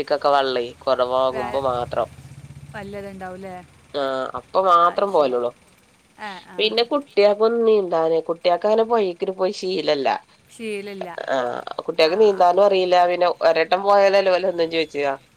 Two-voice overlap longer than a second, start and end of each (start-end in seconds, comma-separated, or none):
none